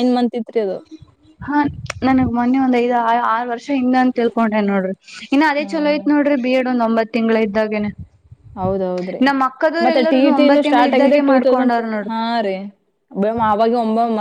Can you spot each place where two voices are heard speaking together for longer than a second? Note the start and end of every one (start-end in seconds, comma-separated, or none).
9.8-12.2